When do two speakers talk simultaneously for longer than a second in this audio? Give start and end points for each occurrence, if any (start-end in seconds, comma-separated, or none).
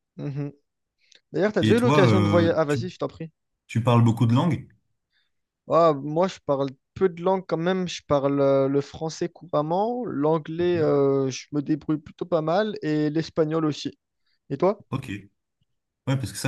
1.6-2.8